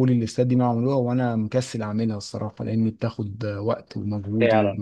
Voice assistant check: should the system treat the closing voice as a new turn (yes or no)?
no